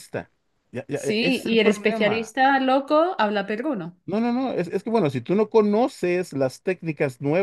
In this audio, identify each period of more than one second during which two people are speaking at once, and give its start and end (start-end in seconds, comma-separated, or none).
0.9-2.4